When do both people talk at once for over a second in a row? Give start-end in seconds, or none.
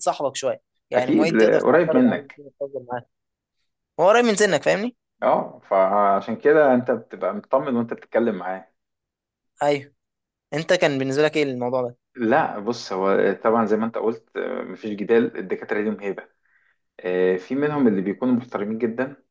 0.9-2.4